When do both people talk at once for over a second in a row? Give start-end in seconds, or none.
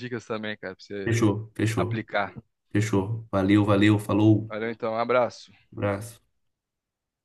none